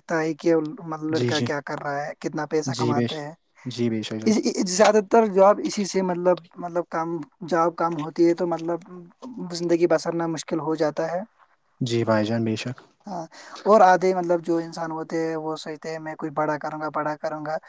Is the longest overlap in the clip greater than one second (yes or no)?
no